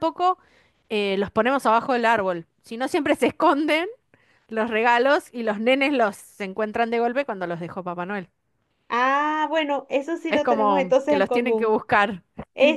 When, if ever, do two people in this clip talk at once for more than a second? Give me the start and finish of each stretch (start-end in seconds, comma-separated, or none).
10.3-11.8